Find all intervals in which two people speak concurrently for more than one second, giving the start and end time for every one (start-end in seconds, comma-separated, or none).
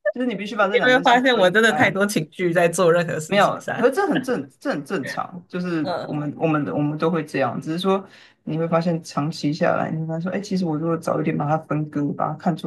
0.6-1.9